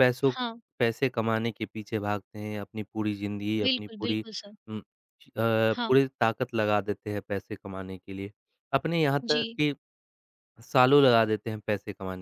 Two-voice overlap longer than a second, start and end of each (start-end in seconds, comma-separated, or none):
none